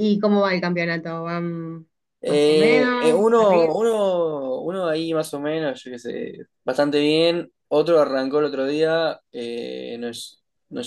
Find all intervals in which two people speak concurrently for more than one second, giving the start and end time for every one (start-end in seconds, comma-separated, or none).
2.2-3.7